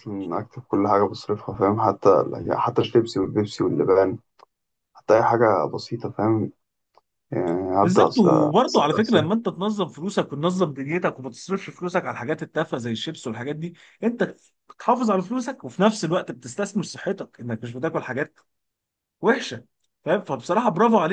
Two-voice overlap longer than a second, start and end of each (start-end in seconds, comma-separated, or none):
7.8-9.2